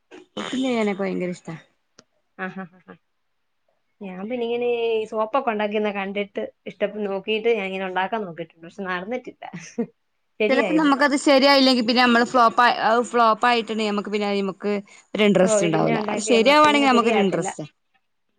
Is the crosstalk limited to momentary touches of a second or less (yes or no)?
no